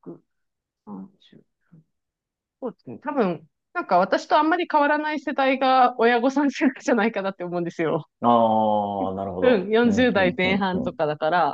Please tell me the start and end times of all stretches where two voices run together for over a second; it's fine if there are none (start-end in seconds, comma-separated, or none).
9.4-11.0